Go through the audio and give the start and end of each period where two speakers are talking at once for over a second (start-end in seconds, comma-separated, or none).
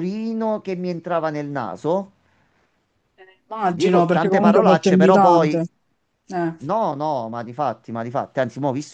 3.7-5.6